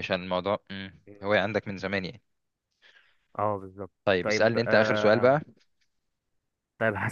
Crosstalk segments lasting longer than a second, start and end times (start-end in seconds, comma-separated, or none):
4.0-5.4